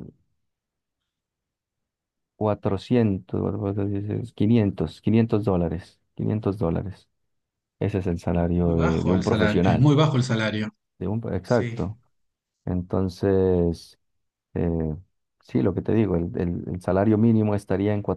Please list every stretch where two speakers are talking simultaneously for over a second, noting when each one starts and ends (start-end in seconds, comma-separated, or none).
8.5-9.9